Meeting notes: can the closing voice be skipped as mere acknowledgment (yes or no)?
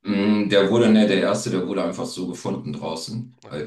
yes